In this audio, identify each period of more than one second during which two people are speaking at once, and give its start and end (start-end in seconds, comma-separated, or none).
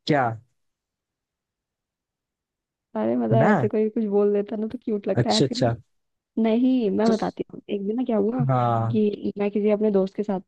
none